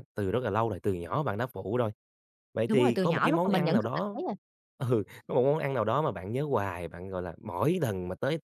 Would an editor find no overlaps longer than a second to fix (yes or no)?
no